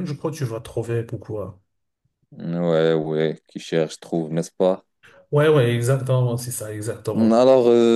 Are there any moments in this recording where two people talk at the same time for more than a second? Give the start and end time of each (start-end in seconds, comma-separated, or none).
none